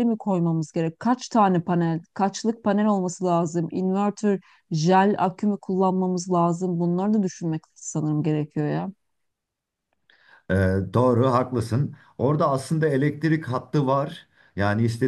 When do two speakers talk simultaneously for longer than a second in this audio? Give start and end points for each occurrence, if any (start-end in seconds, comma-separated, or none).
none